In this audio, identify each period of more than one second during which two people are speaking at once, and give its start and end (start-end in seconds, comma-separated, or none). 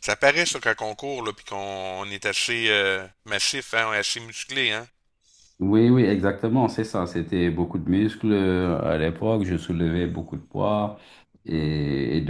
none